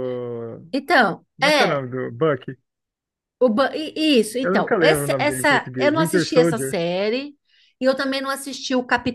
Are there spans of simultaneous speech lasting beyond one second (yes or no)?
yes